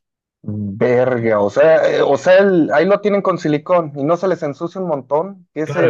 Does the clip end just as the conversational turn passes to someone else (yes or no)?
yes